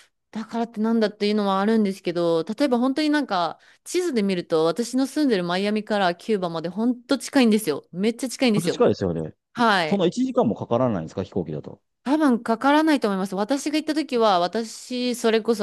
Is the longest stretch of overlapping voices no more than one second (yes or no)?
yes